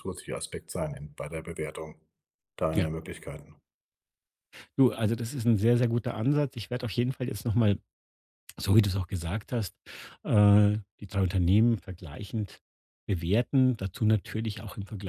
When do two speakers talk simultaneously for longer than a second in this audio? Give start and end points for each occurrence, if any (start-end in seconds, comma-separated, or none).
none